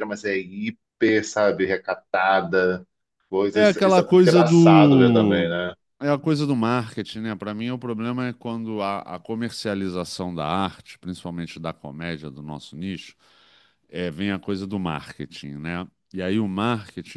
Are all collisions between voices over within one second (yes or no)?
no